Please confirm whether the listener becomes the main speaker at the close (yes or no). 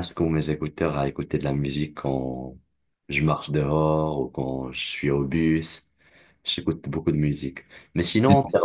no